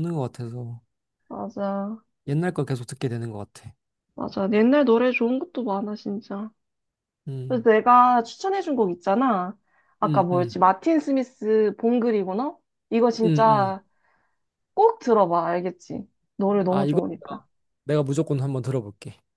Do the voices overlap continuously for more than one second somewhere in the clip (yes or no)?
no